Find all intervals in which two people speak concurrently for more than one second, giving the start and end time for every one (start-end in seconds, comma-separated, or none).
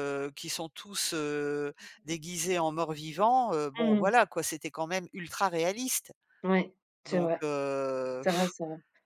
none